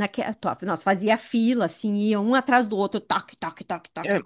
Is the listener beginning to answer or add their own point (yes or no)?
yes